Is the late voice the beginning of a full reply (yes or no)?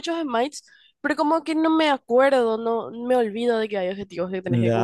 yes